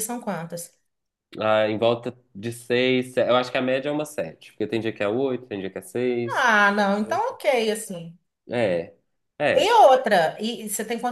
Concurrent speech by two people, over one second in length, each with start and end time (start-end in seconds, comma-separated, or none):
none